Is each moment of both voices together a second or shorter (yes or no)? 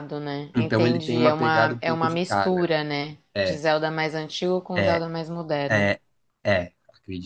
no